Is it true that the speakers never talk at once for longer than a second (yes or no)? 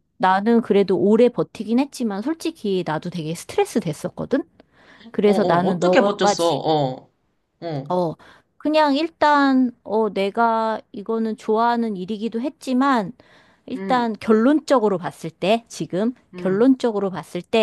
no